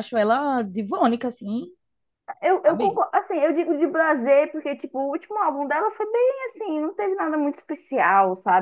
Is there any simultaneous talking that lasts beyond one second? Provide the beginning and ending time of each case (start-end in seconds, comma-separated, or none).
none